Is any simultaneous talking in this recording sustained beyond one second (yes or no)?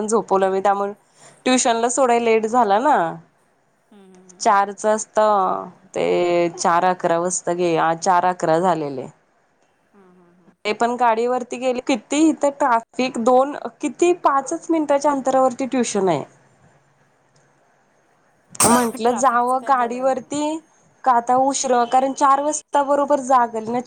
yes